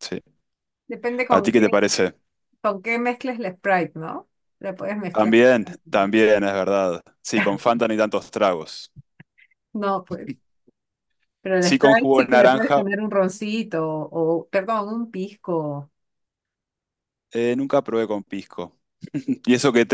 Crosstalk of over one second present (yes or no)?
yes